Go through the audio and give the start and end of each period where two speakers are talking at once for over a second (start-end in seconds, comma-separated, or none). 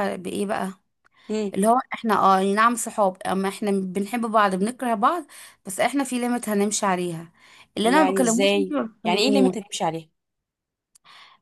7.8-9.6